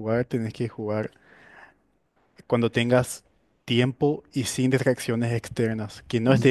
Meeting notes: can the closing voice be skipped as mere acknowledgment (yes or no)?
yes